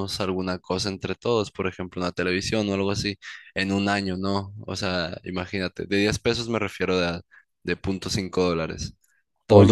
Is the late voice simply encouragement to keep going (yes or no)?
yes